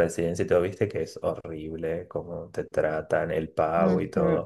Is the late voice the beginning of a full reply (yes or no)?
no